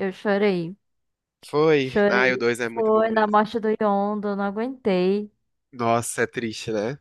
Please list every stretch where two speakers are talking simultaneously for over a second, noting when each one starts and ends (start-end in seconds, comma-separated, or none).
1.8-3.4